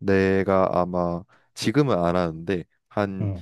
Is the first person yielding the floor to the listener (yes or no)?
no